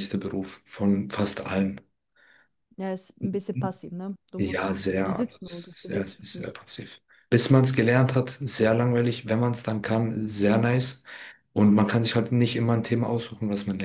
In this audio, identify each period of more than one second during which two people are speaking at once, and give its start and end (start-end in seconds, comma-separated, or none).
4.4-6.5